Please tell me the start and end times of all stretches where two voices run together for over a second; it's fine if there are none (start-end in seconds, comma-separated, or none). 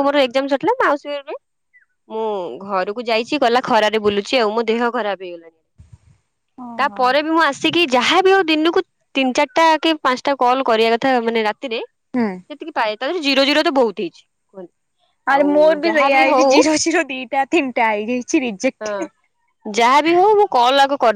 none